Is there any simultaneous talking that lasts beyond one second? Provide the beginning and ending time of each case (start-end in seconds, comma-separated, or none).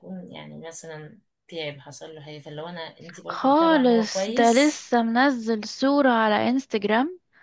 3.4-4.8